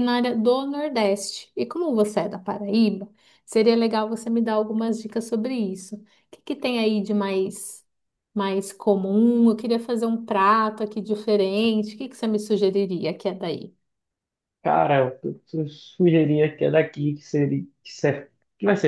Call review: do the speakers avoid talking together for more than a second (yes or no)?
yes